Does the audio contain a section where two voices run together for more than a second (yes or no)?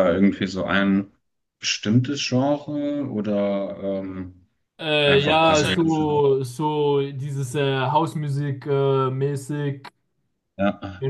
yes